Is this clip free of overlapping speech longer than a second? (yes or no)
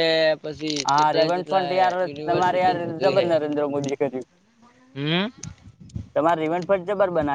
no